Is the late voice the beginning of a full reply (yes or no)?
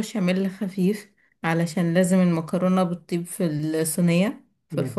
no